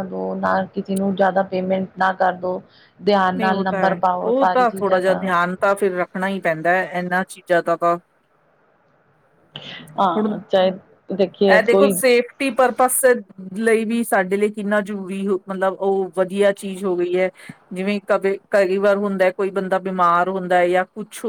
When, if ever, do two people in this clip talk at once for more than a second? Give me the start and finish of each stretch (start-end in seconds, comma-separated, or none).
3.4-5.2